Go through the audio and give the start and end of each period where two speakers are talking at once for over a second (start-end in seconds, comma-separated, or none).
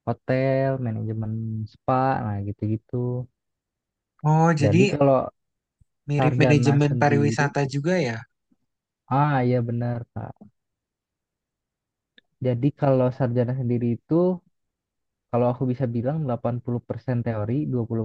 6.2-7.5